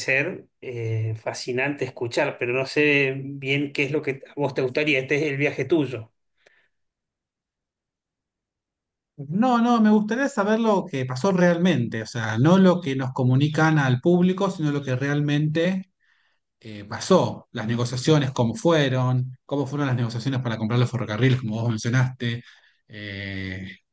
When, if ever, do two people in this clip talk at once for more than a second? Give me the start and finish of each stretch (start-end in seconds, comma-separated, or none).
none